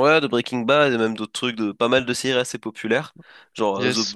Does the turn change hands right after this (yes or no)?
no